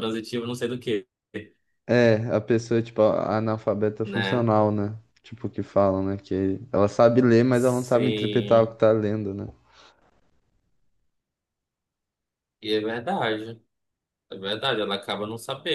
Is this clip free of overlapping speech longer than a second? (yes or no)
no